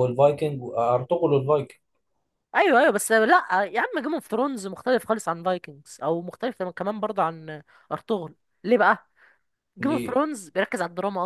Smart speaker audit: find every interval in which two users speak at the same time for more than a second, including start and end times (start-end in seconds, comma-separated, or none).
none